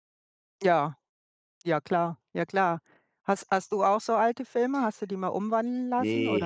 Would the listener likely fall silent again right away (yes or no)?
no